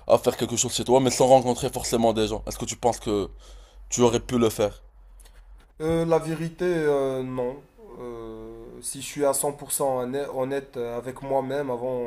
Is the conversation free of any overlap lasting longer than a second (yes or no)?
yes